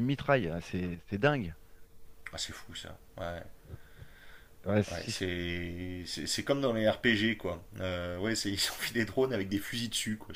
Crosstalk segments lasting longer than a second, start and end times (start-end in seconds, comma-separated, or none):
none